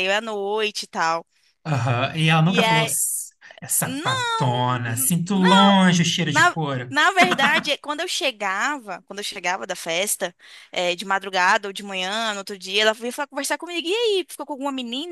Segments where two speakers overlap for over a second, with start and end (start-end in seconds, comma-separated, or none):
3.8-5.4